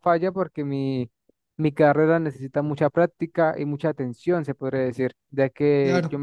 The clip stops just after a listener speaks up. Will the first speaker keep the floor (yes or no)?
yes